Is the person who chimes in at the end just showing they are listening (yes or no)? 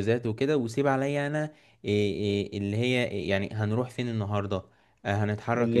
yes